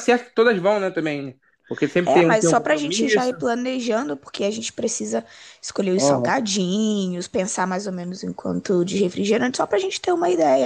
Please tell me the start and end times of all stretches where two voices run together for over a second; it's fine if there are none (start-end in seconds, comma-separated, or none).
2.0-3.4